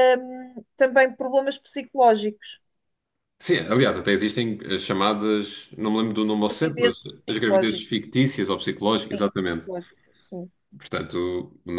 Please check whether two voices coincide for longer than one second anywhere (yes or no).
yes